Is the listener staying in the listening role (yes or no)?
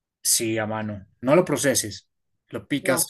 yes